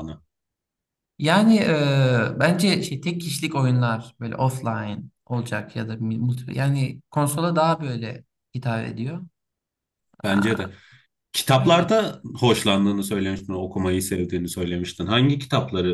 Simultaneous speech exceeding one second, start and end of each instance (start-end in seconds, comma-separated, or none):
none